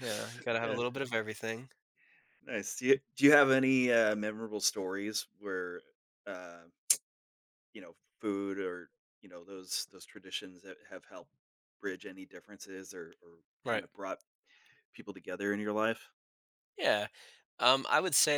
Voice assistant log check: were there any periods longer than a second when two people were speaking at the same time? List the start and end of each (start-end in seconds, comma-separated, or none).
none